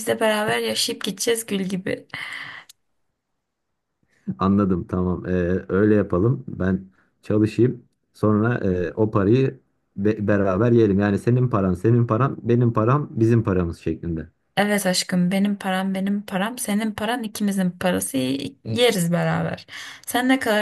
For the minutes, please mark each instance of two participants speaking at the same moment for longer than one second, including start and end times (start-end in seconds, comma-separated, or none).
none